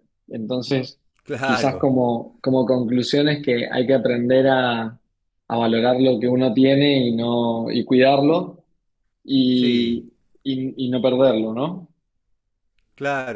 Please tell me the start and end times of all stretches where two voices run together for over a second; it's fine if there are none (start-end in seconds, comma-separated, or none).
none